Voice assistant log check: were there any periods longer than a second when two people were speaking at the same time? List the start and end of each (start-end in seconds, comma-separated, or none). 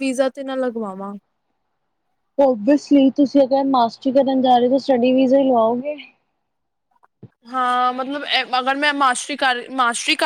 none